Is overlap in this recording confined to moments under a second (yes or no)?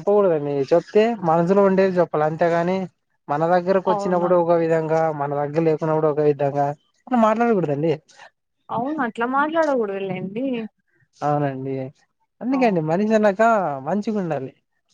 yes